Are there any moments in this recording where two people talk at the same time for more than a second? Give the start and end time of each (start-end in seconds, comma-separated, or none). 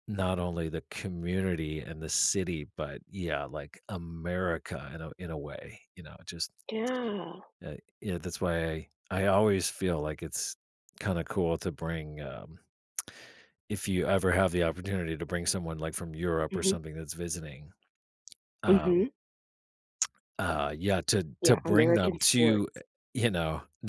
21.4-22.8